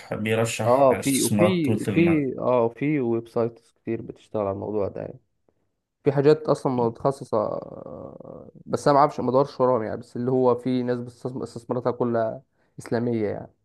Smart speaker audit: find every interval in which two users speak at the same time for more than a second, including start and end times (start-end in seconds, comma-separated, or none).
0.7-2.2